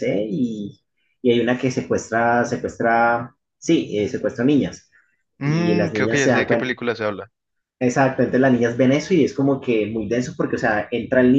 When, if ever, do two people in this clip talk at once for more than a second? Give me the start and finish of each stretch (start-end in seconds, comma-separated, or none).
5.4-6.7